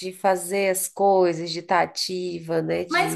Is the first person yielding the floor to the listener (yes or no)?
yes